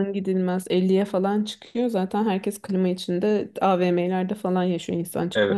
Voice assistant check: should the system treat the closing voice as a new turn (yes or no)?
yes